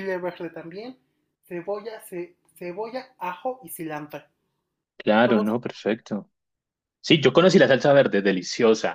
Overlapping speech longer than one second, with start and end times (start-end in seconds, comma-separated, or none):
none